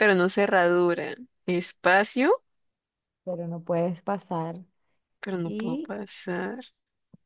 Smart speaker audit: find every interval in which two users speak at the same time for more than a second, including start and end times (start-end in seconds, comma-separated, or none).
none